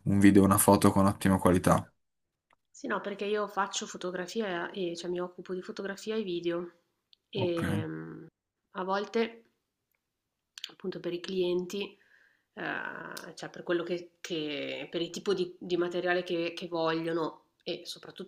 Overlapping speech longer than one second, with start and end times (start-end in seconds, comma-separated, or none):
none